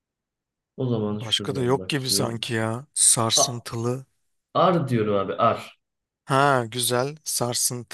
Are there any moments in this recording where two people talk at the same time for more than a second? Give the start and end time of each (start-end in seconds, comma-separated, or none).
1.1-2.5